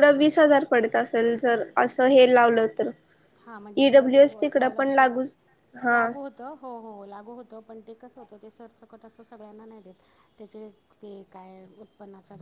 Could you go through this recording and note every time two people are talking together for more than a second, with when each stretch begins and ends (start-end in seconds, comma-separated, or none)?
3.9-5.1